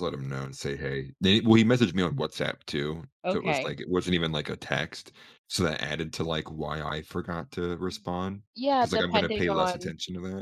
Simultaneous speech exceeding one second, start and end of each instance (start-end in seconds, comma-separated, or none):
8.5-9.9